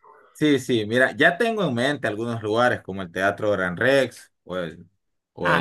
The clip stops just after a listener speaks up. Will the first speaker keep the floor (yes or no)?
yes